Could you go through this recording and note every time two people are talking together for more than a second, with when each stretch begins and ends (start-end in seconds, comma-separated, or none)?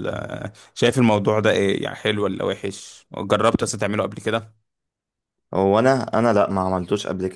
none